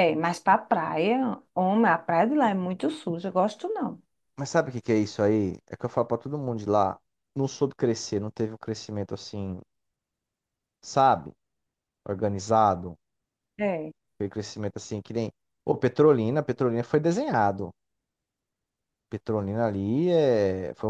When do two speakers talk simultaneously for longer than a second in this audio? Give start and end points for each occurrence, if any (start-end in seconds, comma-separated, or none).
none